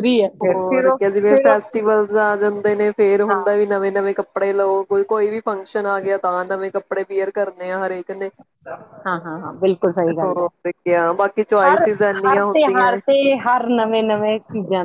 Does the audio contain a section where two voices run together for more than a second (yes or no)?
yes